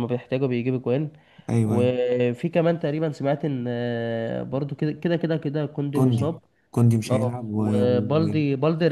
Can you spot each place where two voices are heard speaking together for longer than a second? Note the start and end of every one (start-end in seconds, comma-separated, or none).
none